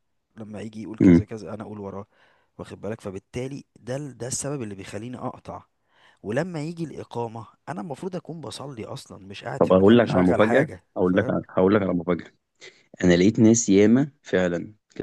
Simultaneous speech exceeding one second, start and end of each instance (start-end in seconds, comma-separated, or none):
9.6-11.3